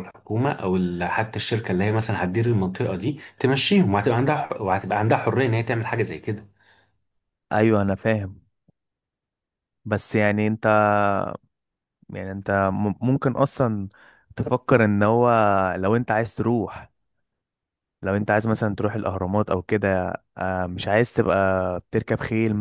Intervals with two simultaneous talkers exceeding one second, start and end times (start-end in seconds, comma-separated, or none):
none